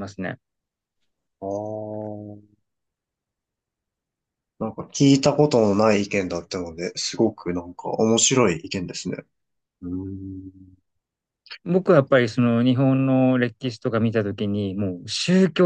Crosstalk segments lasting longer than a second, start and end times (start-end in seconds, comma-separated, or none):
none